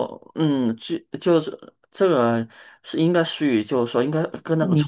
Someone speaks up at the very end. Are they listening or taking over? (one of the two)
listening